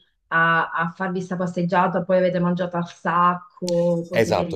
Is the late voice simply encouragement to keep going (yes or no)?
no